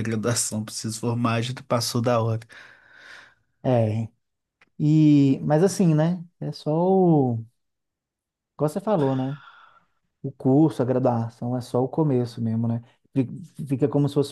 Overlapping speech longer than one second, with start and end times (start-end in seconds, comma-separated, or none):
none